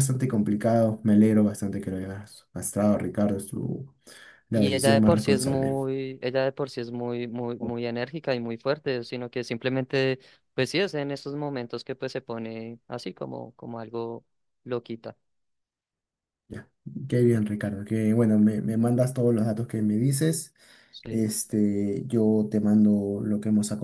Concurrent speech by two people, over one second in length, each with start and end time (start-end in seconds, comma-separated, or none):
4.5-5.8